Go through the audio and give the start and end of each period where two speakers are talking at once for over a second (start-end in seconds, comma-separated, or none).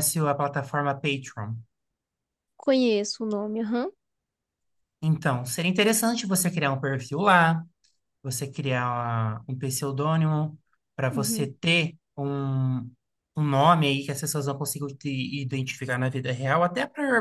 none